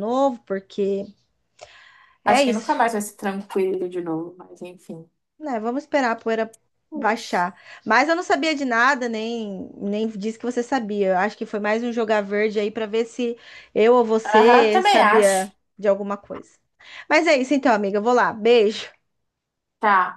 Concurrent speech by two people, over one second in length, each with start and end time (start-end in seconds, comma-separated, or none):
14.2-15.5